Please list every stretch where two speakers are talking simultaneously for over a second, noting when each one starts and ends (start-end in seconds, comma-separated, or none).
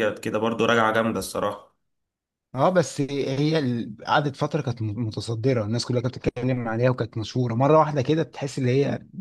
none